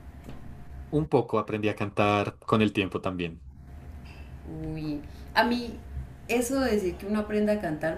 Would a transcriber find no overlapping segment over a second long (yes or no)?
yes